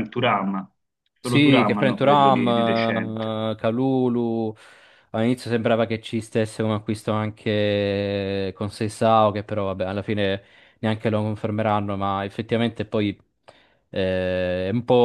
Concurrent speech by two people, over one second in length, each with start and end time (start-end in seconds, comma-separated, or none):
1.2-3.0